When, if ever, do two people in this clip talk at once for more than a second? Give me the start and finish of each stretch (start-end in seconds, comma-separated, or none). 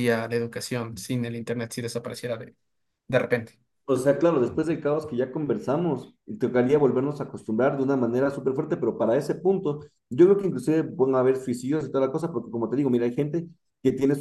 none